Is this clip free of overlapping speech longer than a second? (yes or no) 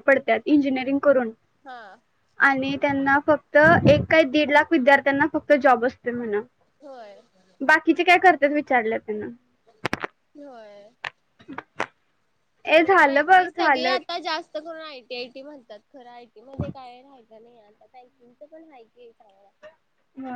no